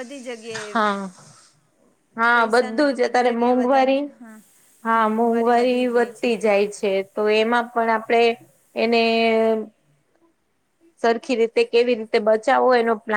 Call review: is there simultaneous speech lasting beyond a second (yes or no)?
yes